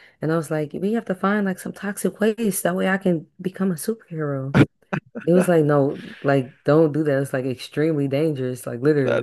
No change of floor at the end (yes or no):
no